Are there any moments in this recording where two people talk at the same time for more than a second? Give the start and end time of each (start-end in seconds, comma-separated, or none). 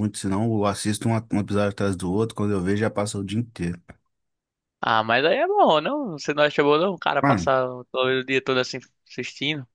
none